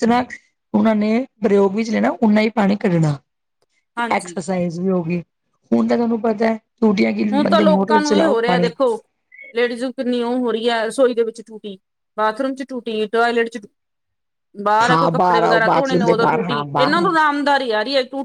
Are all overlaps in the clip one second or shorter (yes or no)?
no